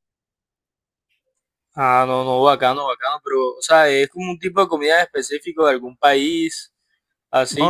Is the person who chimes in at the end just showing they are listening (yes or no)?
no